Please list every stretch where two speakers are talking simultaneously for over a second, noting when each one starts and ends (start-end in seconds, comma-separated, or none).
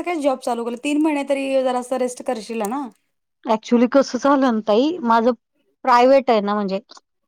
none